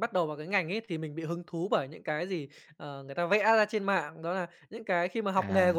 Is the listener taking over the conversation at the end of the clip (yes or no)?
no